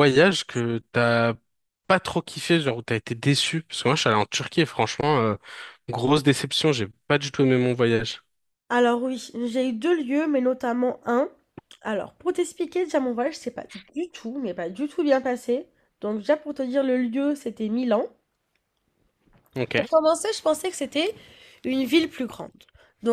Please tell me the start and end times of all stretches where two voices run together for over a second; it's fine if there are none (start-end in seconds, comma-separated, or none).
none